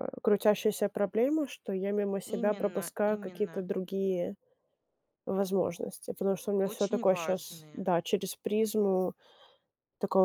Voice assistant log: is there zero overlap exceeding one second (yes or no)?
no